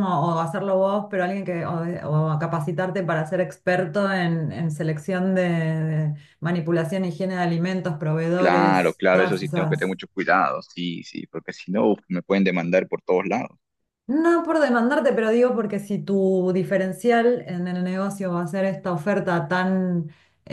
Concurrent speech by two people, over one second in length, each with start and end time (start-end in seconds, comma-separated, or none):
8.3-10.0